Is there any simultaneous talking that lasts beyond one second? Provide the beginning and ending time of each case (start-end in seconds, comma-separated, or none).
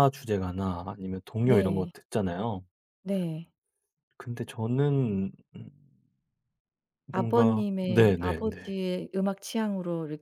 7.1-8.8